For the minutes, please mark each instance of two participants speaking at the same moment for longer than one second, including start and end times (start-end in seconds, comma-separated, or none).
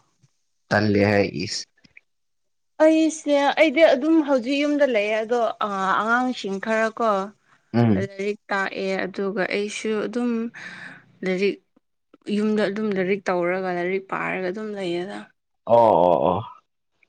none